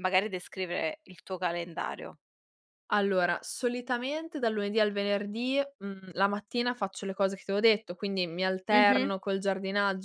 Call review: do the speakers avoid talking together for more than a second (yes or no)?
yes